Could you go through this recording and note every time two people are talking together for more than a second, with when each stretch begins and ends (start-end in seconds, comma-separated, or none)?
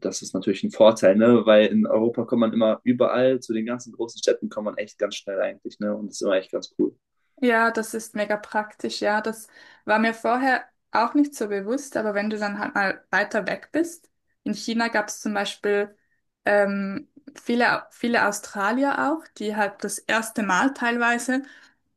none